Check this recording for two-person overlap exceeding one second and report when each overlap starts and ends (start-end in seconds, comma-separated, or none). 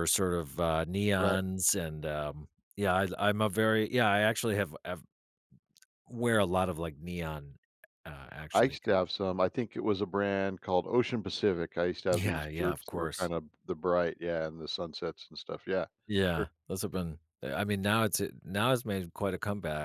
12.1-13.3